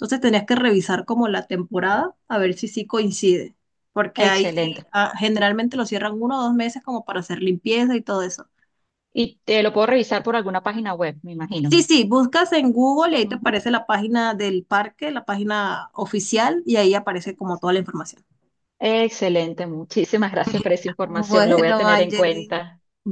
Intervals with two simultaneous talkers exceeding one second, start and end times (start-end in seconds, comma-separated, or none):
21.0-22.6